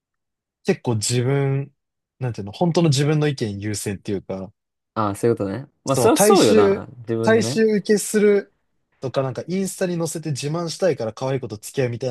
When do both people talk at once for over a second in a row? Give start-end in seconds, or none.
5.8-7.6